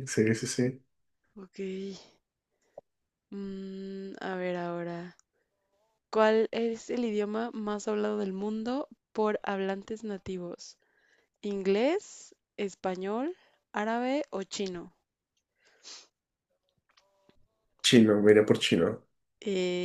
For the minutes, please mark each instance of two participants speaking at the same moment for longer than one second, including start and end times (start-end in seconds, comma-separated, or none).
none